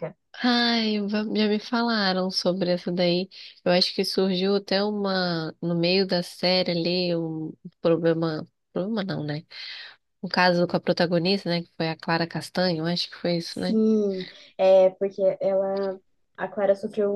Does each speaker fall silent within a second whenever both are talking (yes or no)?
yes